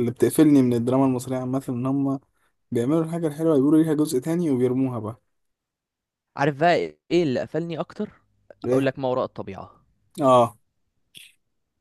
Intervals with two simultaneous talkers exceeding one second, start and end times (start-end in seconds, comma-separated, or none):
none